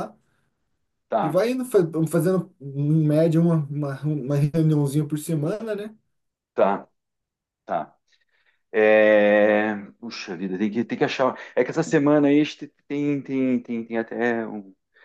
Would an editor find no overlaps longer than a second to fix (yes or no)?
yes